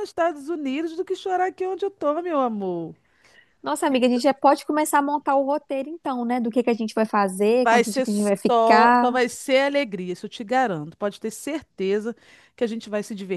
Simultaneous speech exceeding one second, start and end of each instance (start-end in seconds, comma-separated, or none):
7.6-9.2